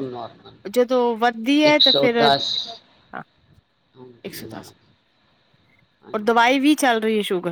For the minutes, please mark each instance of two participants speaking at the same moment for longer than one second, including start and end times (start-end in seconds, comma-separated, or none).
none